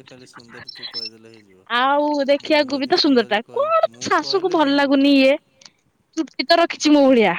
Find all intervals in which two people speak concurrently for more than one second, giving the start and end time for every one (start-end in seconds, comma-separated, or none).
2.5-5.2